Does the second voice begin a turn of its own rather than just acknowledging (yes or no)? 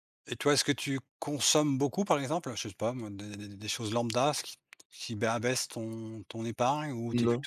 no